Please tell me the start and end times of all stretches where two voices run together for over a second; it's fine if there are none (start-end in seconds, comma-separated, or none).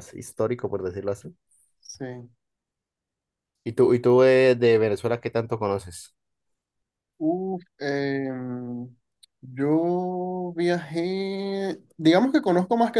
none